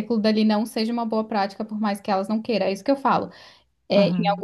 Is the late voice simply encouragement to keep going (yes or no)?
yes